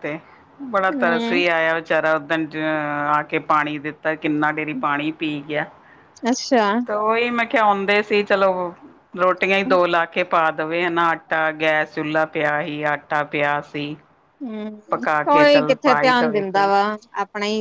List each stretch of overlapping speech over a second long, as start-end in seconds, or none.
14.9-16.7